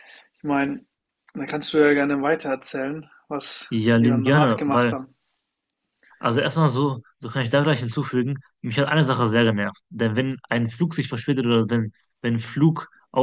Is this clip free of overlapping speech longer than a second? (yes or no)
no